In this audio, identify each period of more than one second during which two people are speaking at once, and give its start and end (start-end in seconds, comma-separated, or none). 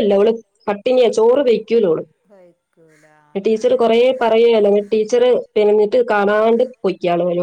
none